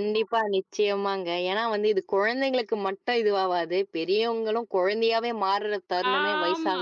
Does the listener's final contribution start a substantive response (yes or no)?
yes